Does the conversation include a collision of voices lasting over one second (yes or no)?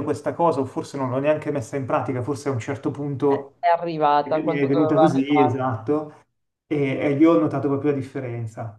yes